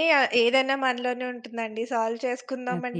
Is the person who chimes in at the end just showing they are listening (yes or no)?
yes